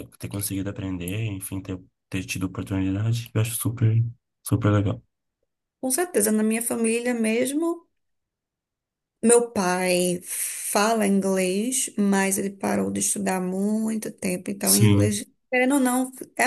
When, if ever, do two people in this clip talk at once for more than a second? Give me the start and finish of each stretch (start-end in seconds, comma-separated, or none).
none